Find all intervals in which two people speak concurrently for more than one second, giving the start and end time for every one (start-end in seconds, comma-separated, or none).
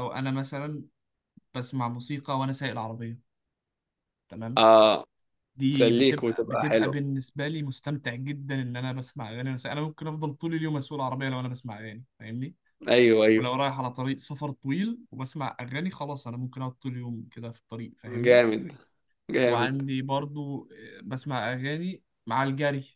5.7-7.0